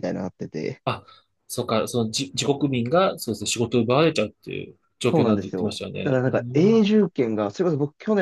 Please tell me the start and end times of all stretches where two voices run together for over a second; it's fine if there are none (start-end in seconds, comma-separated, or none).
5.1-6.8